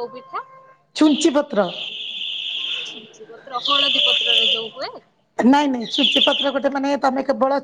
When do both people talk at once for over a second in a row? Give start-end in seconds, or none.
none